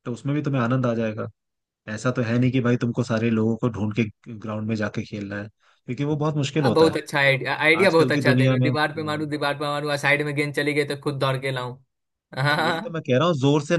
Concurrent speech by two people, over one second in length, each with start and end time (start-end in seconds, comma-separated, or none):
7.8-9.3